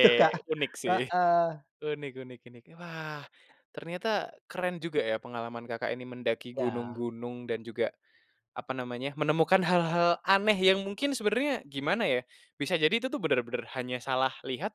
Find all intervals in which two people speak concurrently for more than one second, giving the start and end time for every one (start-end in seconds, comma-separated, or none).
none